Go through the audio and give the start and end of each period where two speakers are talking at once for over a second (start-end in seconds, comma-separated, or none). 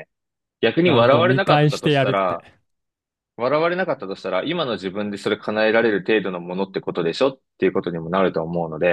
0.8-2.5